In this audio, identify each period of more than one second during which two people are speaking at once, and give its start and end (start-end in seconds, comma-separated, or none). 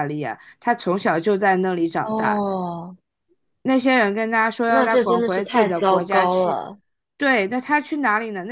4.6-6.6